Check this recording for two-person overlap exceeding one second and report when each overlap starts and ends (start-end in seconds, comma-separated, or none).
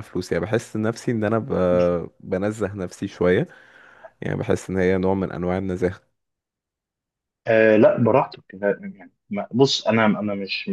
none